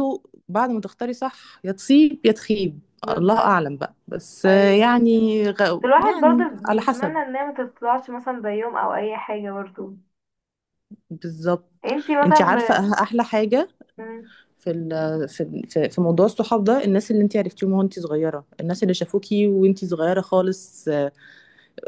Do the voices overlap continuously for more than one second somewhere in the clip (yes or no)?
yes